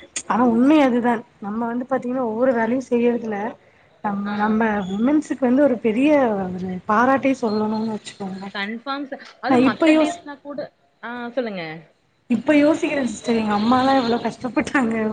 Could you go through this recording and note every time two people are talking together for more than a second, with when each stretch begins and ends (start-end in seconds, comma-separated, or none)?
none